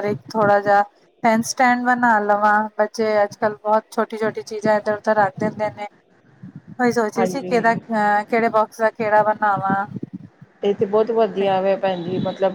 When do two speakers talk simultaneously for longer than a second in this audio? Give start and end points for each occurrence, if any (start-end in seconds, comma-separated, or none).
none